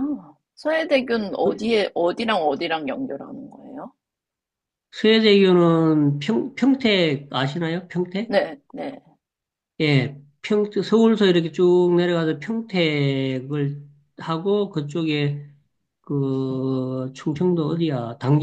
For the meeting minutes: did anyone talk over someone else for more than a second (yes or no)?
no